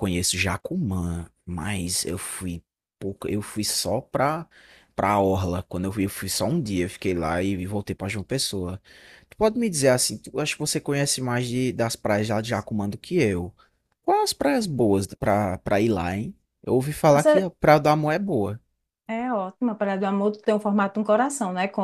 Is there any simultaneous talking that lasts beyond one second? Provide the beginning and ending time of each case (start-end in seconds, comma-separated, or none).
none